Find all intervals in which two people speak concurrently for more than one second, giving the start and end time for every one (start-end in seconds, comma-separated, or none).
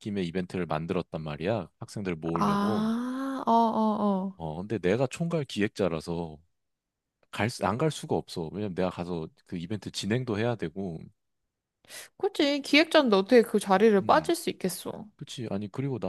none